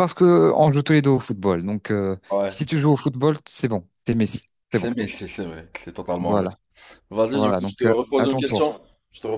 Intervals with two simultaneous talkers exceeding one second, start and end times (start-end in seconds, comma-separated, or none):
7.3-8.7